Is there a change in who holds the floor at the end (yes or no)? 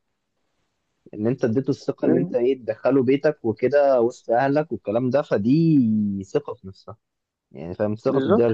yes